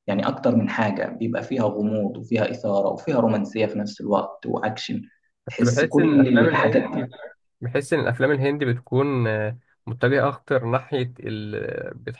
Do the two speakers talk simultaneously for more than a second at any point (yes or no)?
yes